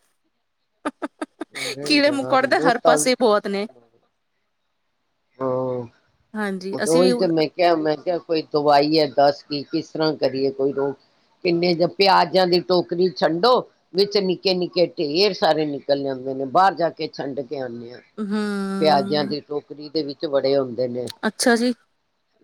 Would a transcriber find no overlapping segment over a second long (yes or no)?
no